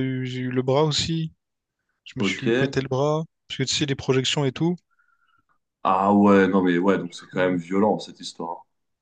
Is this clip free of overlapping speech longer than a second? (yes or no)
yes